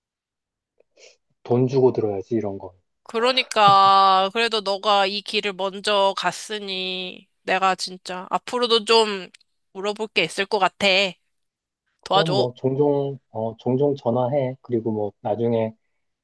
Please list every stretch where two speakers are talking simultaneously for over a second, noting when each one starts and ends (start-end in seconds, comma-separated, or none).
none